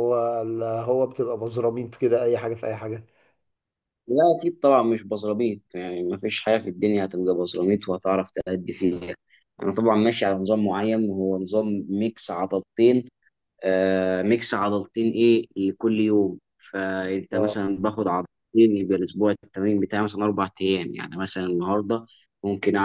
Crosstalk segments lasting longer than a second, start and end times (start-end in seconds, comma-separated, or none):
none